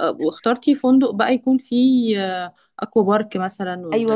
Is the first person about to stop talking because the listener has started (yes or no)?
yes